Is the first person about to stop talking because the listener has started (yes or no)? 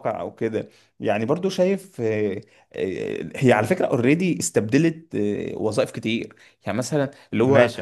no